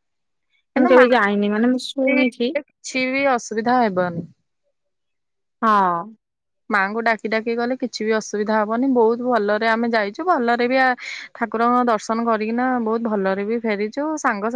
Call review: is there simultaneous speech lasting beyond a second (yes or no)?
yes